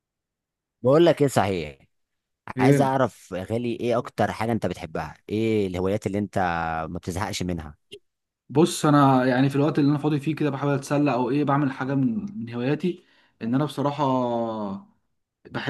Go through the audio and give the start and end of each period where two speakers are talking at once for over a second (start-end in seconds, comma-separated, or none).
none